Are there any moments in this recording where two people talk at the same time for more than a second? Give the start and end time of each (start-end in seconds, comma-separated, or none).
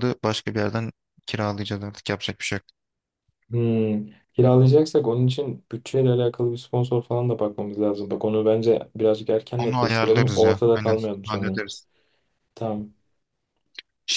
9.6-11.6